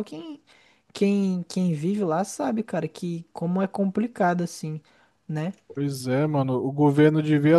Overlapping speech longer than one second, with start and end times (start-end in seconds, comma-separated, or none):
none